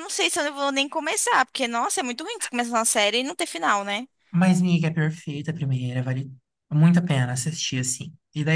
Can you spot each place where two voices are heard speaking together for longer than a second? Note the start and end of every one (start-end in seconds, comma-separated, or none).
none